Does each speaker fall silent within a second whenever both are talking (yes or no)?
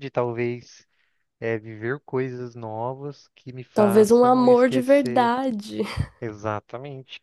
no